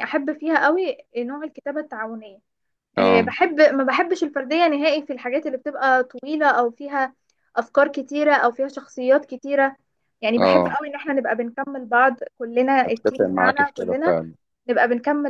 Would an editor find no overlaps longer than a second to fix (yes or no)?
no